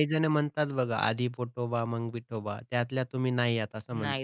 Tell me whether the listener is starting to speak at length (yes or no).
yes